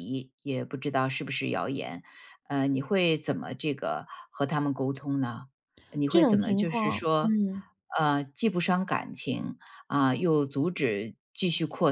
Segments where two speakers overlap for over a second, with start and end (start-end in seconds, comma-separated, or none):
6.1-7.3